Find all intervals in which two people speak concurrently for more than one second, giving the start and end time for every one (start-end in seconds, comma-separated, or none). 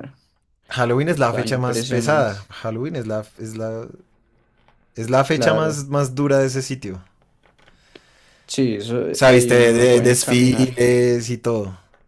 1.1-2.3, 9.1-10.7